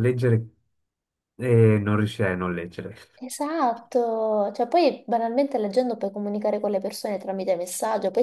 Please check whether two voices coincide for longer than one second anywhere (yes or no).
no